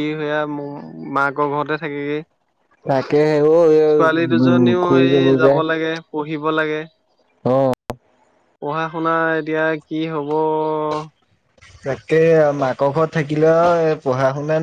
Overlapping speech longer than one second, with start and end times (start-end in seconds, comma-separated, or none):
3.9-5.5